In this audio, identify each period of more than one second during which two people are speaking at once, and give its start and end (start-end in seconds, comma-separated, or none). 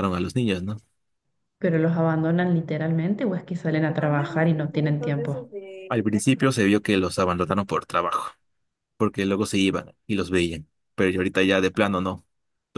3.9-5.5